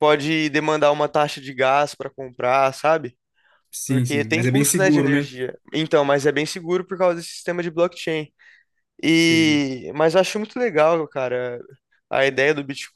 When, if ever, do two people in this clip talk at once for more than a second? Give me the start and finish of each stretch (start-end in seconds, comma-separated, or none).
3.9-5.3